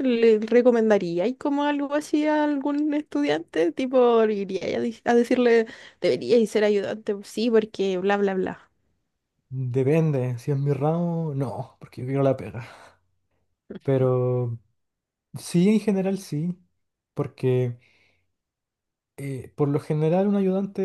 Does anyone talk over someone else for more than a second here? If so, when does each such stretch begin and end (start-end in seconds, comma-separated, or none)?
none